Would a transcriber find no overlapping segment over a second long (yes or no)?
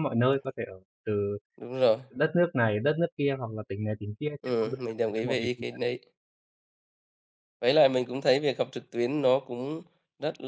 no